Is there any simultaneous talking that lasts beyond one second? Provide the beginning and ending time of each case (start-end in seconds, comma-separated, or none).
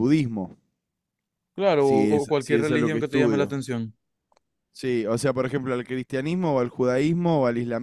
1.8-3.6